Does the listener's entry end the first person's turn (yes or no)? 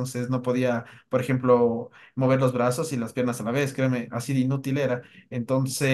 no